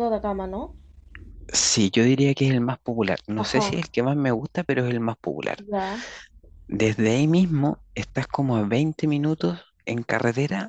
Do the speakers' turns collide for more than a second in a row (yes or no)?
no